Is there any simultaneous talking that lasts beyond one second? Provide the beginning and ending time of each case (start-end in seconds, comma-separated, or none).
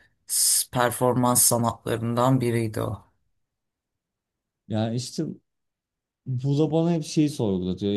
none